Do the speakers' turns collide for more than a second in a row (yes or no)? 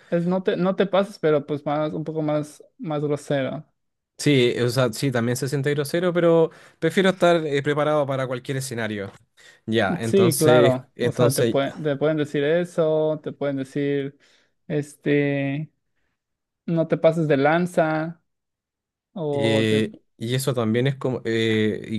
yes